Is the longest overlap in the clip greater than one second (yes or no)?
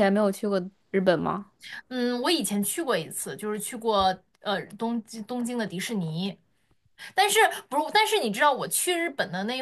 no